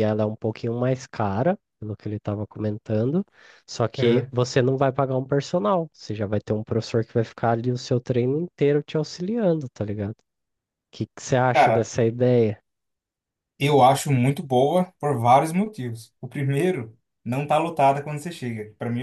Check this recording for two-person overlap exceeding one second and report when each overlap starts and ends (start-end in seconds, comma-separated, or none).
none